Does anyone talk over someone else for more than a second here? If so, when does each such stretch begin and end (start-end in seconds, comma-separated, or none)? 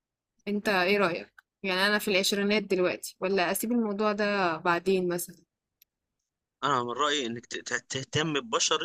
none